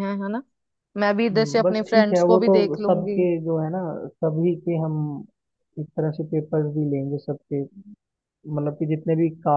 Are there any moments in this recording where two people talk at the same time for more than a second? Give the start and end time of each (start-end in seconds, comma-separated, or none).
1.3-3.2